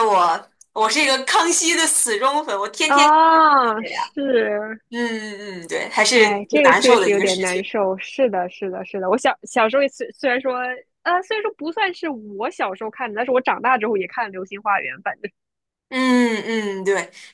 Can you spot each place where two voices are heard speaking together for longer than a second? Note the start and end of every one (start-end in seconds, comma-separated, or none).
6.1-7.6